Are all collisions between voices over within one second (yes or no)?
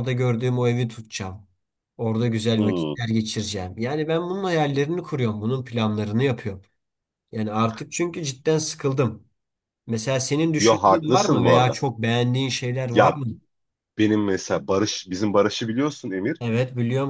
no